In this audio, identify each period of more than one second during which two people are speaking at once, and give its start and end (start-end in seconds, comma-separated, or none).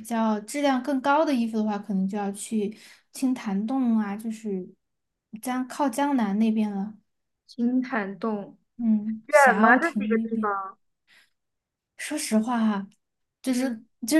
9.3-10.5